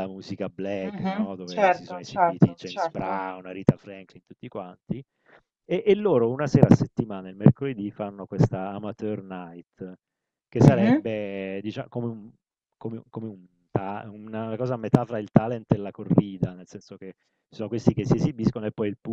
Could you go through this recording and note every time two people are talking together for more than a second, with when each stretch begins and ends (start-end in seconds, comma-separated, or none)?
0.8-3.2